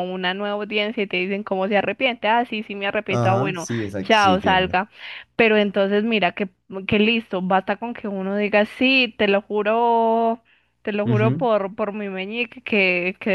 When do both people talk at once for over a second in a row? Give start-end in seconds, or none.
3.1-4.8